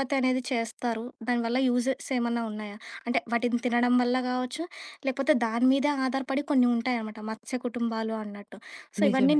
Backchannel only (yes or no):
yes